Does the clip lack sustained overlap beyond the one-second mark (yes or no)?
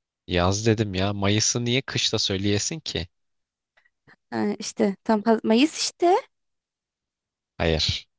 yes